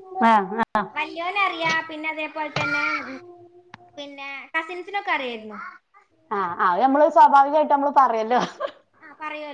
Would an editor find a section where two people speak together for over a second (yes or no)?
no